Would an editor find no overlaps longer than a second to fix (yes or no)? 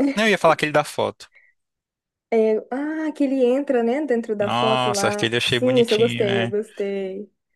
no